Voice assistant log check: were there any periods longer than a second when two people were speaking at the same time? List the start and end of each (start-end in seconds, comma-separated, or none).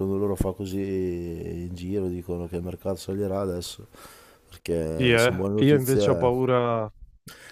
4.9-6.4